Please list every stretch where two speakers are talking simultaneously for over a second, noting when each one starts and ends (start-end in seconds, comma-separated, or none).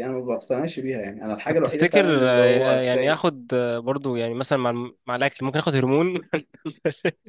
1.5-3.2